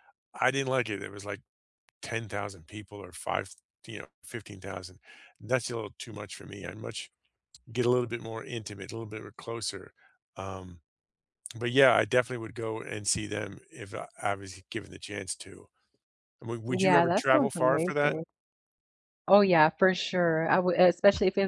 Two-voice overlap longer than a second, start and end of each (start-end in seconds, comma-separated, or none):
16.7-18.2